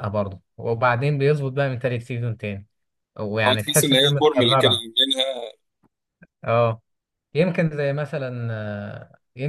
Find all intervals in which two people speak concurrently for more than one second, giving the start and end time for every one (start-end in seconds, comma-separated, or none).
3.5-4.9